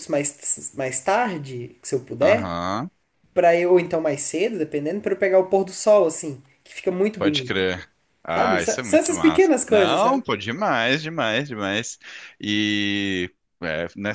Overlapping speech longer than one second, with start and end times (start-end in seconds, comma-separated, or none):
8.3-10.2